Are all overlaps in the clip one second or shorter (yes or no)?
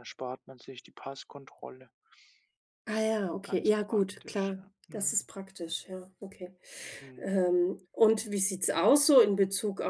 no